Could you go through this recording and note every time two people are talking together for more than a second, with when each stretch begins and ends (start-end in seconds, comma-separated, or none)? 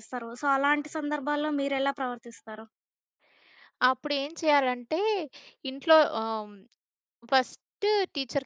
none